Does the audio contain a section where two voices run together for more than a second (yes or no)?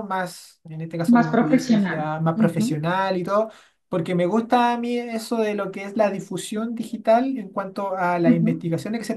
yes